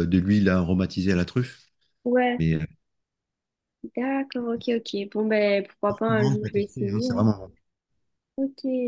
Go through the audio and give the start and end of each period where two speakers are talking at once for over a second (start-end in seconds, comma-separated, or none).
5.9-7.3